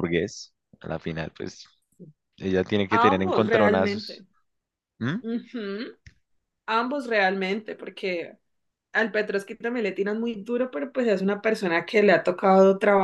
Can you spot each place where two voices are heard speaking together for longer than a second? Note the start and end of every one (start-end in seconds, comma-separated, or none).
2.9-4.2